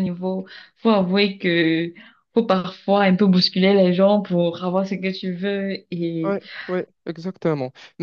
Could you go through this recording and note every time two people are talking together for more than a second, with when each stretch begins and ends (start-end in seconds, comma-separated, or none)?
none